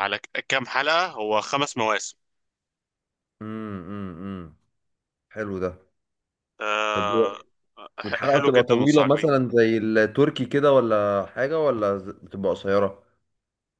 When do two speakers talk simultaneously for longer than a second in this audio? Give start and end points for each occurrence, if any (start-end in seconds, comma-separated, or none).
8.1-9.3